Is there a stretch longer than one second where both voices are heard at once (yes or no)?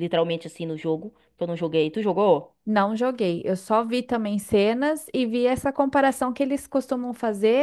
no